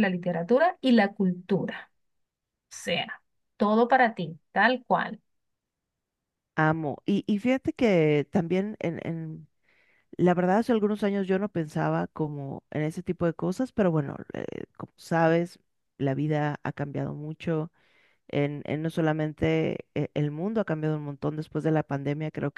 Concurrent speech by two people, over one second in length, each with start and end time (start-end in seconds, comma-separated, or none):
none